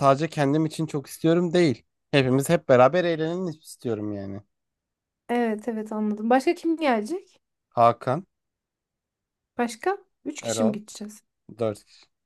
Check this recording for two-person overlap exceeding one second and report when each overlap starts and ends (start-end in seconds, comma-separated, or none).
none